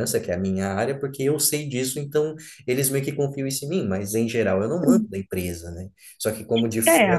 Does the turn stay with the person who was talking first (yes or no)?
yes